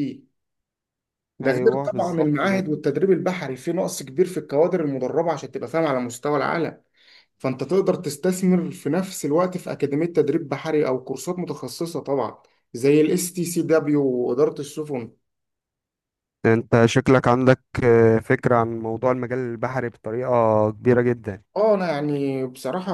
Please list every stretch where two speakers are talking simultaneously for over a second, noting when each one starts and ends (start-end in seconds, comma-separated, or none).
1.4-2.6